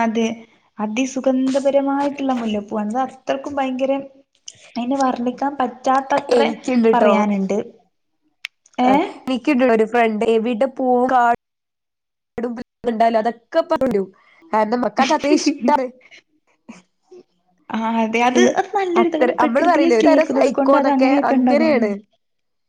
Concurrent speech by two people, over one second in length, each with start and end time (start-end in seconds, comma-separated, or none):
19.0-21.7